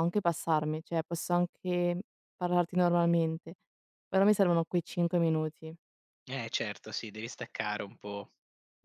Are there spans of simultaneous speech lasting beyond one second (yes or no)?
no